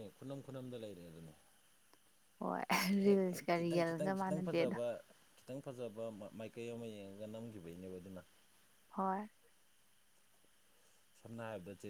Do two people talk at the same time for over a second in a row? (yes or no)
yes